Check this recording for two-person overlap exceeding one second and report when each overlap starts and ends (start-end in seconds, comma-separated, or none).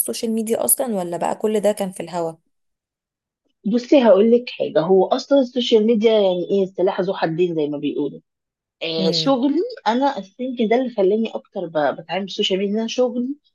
none